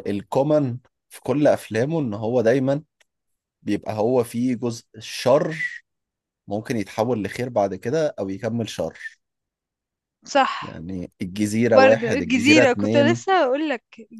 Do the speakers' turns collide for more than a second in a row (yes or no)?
yes